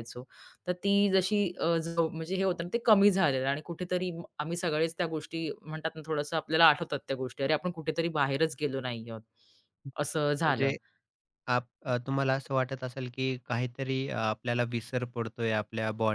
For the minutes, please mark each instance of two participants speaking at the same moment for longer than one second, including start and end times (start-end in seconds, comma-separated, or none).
none